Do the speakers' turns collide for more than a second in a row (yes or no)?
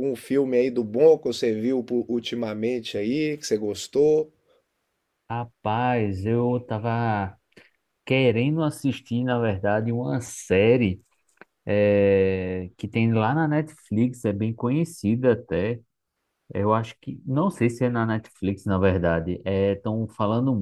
no